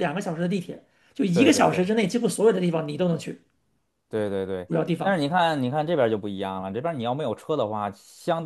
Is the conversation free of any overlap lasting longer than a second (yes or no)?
yes